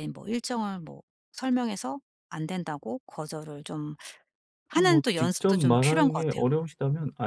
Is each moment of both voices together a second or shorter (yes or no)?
no